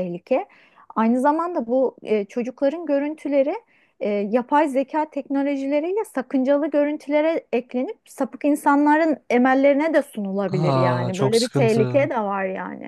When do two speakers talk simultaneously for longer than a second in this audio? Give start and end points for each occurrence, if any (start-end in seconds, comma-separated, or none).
10.5-12.1